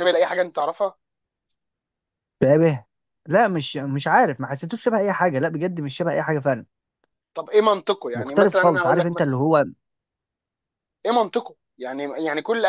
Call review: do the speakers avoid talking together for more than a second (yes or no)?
no